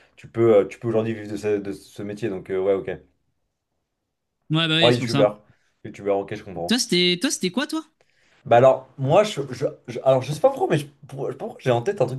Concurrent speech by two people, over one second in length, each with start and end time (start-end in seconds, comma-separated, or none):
none